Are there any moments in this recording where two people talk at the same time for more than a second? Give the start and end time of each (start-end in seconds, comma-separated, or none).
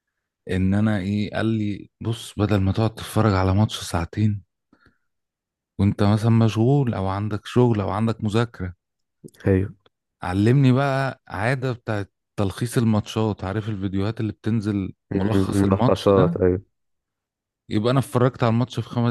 15.1-16.4